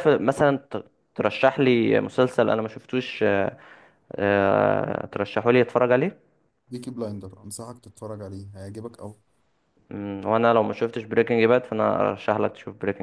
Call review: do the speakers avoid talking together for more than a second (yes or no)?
yes